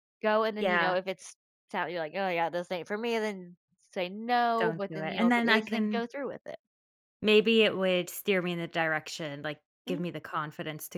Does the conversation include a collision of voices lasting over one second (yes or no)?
yes